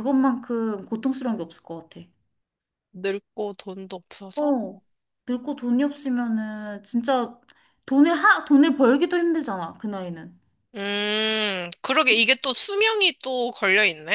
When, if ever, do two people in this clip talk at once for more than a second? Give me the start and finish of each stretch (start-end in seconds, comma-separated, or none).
none